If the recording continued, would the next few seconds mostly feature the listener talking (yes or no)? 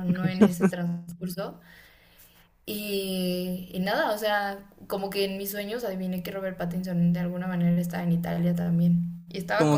yes